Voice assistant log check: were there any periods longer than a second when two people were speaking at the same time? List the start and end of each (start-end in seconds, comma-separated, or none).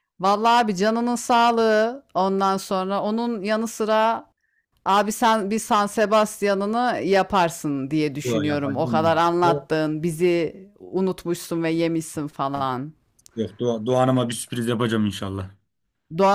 8.2-9.7